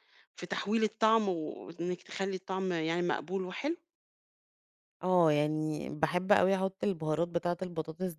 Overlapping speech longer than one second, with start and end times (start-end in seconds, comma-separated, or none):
none